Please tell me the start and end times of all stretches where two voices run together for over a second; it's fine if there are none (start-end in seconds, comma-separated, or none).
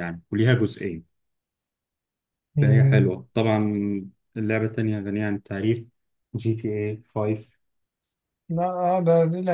none